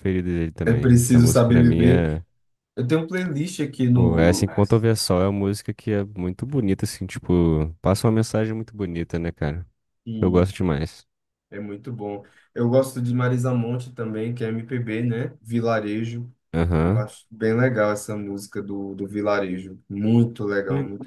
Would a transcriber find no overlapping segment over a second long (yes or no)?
no